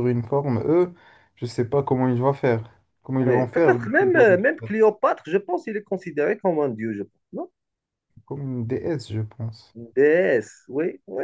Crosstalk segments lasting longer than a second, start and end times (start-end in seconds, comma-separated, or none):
3.2-4.7